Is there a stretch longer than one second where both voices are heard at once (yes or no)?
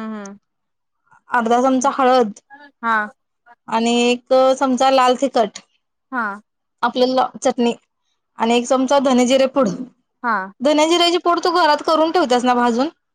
no